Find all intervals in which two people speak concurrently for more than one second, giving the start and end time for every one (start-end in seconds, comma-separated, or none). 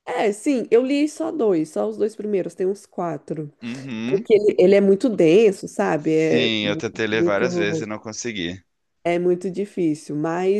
6.0-7.8